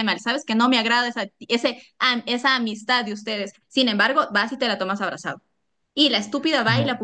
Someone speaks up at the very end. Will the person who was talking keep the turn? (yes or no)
yes